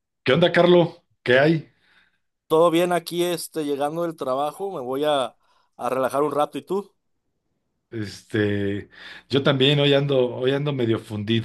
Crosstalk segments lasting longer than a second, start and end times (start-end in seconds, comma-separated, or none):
none